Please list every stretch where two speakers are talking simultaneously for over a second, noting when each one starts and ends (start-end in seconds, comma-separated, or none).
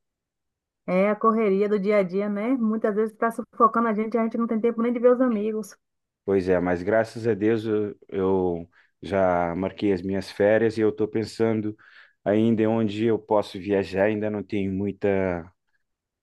none